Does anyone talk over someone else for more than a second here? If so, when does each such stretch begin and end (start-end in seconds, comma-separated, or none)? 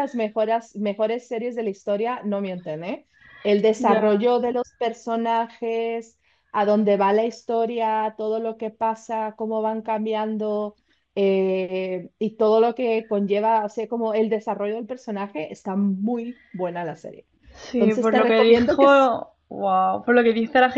17.7-19.1